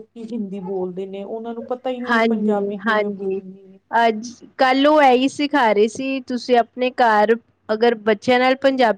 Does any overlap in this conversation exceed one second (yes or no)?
yes